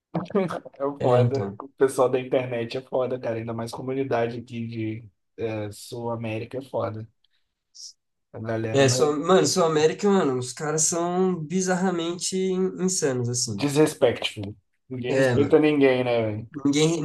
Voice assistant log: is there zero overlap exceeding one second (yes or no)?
yes